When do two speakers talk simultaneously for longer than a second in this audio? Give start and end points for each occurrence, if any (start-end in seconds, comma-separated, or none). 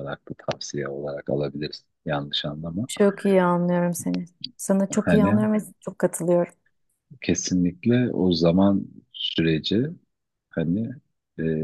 none